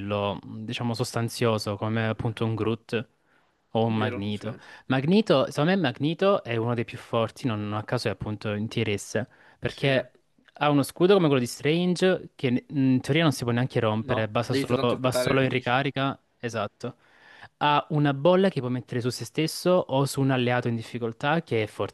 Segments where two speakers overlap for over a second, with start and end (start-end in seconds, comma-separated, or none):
14.0-15.8